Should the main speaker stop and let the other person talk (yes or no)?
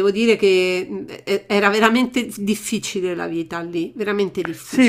yes